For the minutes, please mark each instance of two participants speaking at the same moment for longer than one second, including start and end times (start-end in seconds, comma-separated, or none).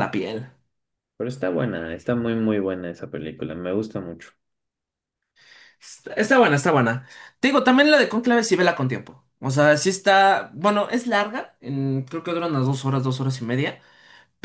none